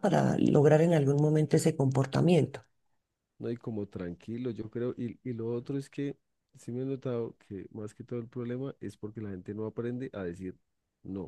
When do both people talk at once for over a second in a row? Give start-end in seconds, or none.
none